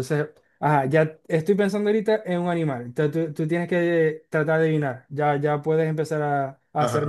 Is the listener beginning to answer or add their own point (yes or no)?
yes